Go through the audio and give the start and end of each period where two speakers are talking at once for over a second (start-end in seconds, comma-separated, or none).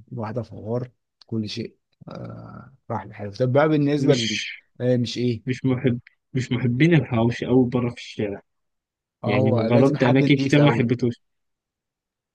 9.2-10.9